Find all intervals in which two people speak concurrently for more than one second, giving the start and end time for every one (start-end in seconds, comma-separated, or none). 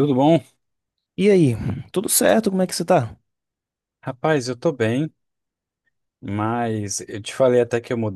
none